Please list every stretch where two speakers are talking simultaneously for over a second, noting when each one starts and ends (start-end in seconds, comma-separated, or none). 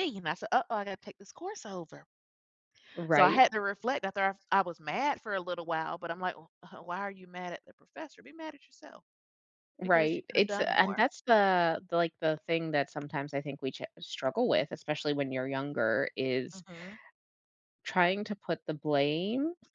9.8-11.1